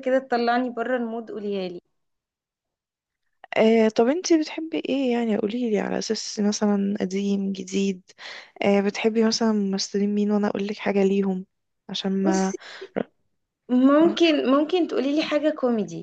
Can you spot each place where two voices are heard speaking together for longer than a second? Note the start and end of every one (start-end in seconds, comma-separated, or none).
none